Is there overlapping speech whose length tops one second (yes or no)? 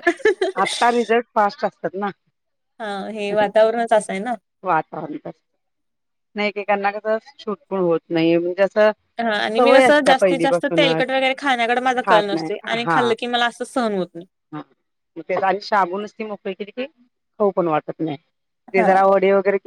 no